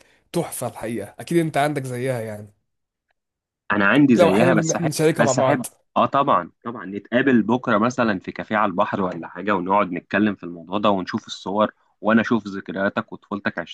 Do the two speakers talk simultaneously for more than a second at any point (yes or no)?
yes